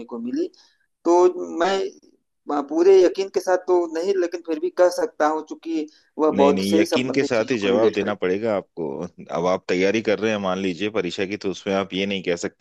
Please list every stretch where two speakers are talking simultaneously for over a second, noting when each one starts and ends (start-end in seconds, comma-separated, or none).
6.4-8.1